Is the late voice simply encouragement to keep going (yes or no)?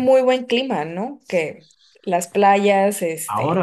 no